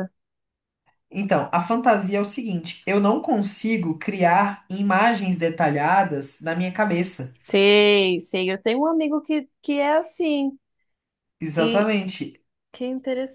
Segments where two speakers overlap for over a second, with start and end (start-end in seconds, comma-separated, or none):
none